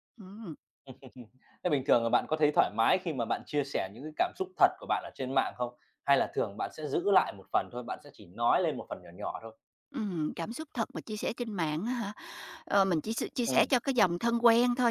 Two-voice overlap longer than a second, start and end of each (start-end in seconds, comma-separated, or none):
none